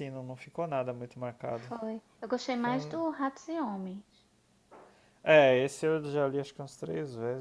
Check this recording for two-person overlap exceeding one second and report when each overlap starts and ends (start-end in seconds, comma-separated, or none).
none